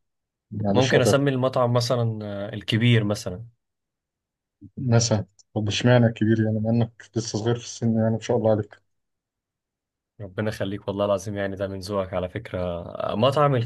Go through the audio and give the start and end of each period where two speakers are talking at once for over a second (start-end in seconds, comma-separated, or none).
none